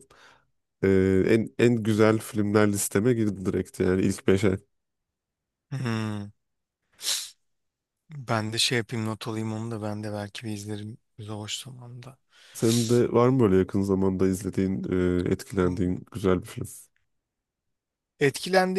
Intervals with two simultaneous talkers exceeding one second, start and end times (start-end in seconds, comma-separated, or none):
none